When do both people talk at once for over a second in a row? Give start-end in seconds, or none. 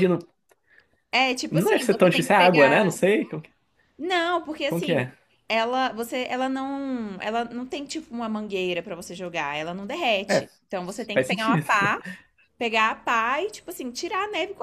1.5-2.9